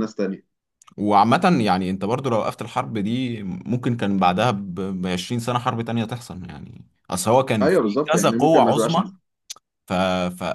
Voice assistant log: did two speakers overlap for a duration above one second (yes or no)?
yes